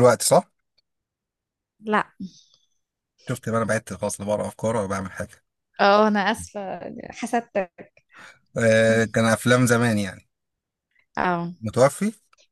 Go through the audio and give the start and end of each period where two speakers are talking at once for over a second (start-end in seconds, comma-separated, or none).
none